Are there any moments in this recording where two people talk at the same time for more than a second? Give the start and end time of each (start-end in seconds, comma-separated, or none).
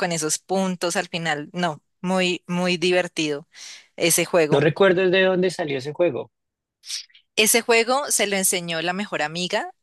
none